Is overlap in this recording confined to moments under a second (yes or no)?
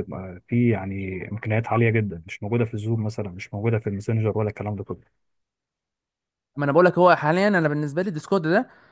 yes